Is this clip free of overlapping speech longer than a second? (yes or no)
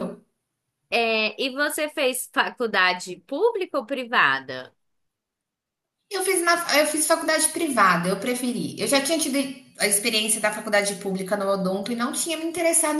yes